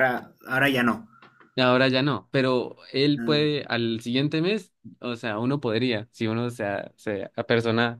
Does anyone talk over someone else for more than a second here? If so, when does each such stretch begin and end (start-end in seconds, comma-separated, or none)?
none